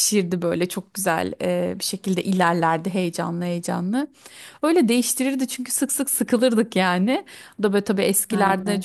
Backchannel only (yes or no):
yes